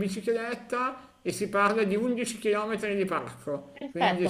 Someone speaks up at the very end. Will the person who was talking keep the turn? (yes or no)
no